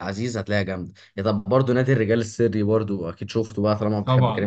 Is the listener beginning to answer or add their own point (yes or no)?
yes